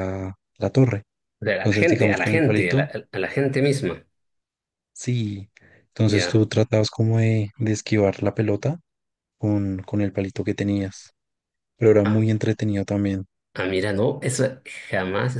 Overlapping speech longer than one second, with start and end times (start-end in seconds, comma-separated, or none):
1.6-2.9